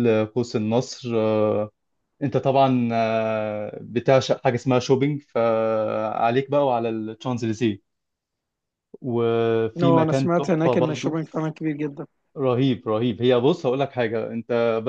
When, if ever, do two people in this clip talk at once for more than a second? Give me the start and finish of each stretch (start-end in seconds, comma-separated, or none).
9.8-11.2